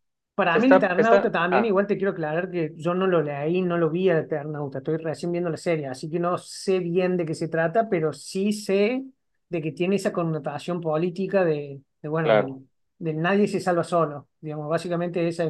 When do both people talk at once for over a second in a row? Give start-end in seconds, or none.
0.5-1.8